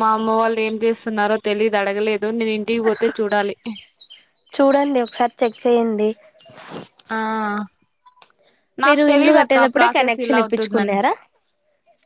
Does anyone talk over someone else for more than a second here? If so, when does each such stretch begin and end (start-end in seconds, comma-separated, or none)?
8.9-11.0